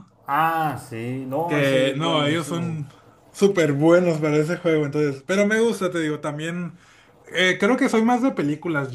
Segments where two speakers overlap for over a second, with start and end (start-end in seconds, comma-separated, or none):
1.4-2.9